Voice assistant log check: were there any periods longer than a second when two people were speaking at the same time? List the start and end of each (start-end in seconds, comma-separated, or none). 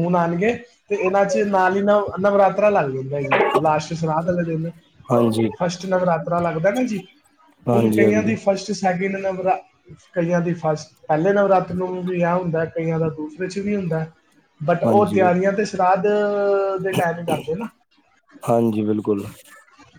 none